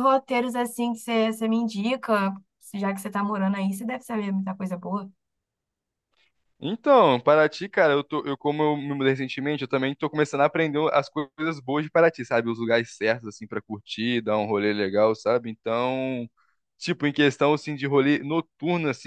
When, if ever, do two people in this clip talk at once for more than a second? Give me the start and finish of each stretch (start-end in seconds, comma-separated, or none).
none